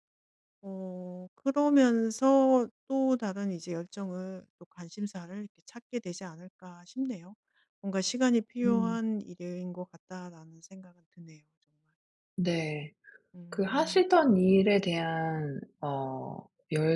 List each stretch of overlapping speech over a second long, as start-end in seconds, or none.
none